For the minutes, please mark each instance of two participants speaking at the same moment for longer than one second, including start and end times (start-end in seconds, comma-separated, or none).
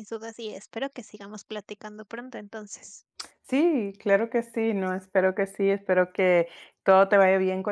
none